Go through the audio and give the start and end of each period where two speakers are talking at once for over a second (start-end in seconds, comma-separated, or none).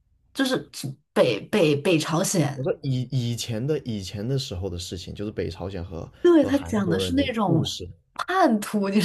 6.2-7.7